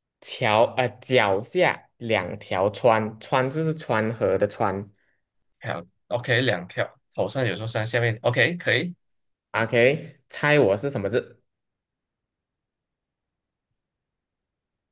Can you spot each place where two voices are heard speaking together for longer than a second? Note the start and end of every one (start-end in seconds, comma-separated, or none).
none